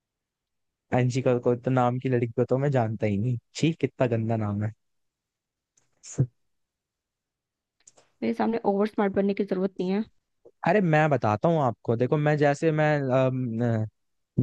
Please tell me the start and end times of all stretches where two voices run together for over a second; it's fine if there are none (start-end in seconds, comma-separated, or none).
none